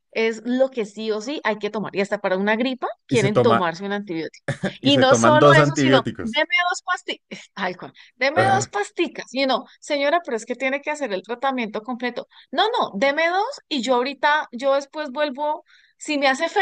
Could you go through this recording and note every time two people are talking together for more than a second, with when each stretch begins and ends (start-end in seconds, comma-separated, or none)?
4.8-6.5